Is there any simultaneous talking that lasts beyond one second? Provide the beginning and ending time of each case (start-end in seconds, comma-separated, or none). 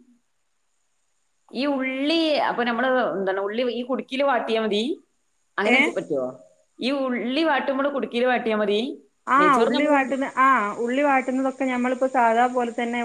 none